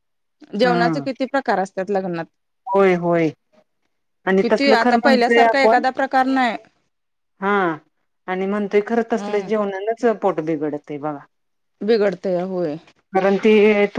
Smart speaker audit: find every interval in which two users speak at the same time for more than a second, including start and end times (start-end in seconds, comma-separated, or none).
4.4-5.8